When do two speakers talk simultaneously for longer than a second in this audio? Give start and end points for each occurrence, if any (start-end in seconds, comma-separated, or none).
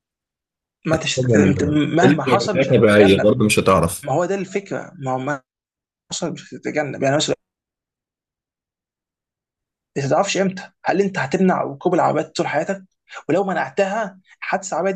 1.1-3.3